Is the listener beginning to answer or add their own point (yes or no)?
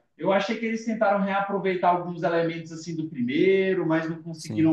no